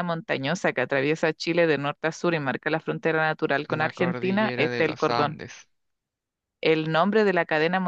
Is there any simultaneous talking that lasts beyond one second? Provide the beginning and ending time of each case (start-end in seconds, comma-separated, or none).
3.7-5.4